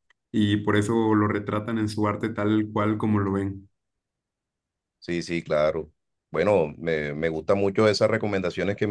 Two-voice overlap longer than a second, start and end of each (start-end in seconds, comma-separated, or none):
none